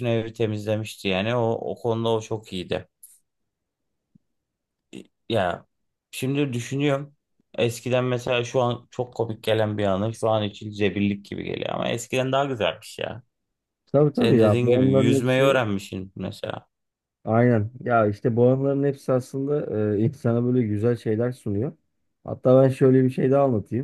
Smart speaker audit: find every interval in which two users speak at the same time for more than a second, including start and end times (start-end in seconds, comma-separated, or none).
14.1-15.6